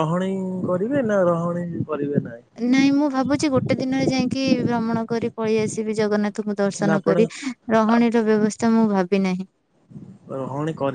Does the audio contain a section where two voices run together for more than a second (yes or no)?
no